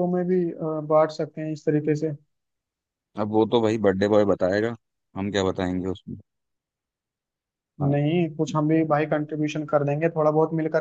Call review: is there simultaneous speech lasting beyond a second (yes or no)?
no